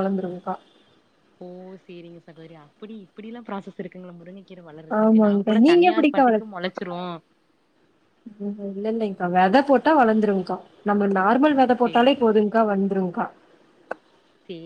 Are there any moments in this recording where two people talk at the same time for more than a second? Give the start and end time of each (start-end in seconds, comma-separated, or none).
5.0-6.5